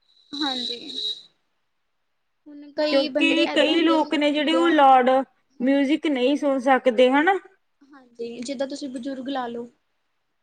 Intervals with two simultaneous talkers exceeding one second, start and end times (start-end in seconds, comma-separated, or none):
2.9-4.8